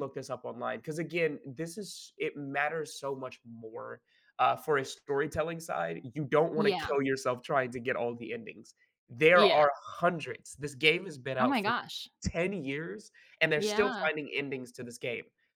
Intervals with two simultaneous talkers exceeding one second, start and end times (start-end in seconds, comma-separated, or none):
none